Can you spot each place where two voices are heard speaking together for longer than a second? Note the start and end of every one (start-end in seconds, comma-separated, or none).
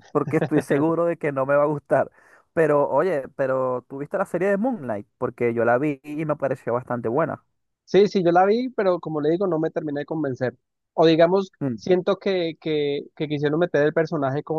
none